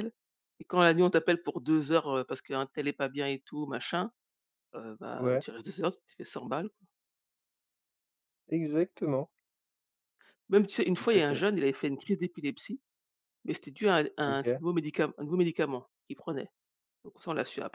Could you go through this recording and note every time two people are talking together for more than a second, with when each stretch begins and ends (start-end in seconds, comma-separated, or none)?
none